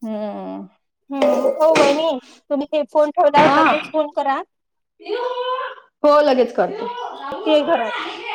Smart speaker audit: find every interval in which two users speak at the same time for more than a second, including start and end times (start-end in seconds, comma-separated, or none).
none